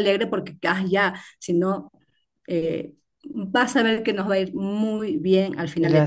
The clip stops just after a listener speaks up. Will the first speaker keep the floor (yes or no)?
no